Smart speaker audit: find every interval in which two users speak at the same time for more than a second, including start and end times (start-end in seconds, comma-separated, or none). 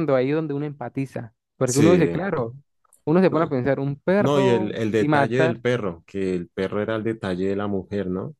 4.2-5.6